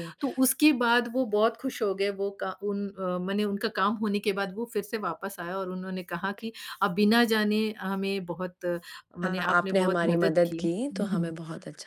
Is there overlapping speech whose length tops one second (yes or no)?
yes